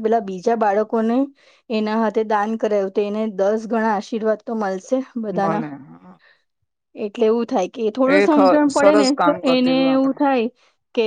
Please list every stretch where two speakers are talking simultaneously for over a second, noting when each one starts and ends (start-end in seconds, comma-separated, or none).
8.2-10.2